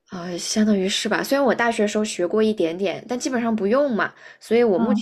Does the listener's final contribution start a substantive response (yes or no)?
no